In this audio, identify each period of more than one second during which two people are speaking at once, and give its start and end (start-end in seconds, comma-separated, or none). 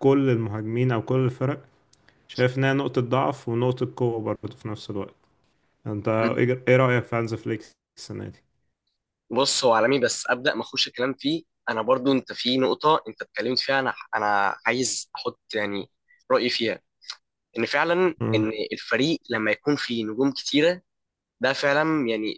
none